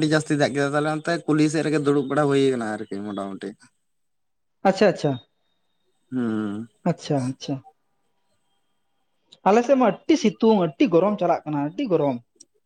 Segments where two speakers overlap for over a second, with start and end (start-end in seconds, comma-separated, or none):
none